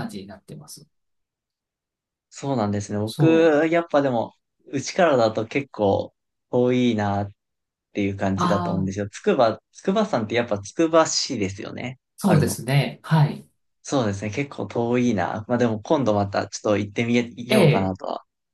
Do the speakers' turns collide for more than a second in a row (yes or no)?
no